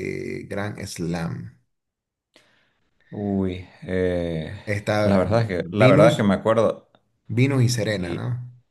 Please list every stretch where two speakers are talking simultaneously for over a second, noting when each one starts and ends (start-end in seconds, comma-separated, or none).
5.0-6.3